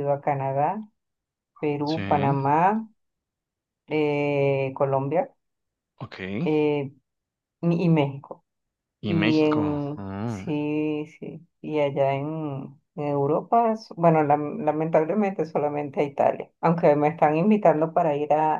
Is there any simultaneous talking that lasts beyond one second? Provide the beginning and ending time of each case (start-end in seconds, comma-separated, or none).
9.1-10.6